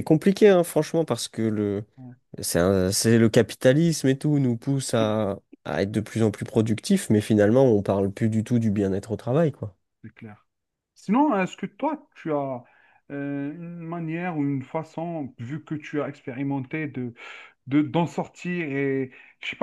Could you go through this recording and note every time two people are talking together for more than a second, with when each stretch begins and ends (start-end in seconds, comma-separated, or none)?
none